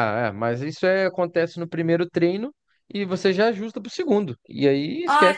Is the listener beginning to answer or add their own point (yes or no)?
yes